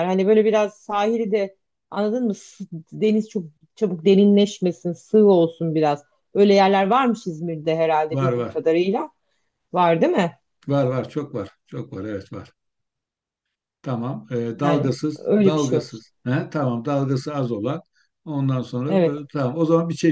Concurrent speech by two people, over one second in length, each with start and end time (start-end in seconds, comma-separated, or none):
14.6-16.1